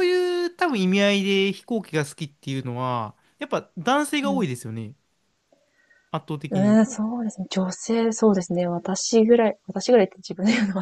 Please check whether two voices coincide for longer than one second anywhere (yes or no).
no